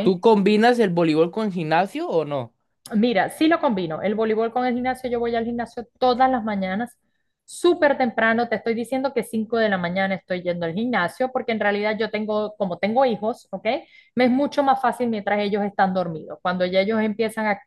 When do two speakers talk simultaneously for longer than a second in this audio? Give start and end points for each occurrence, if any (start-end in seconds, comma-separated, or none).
none